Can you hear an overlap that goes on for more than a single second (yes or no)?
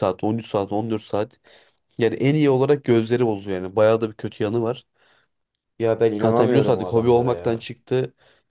yes